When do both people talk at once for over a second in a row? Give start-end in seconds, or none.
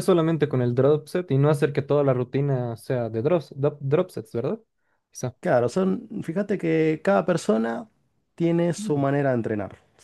none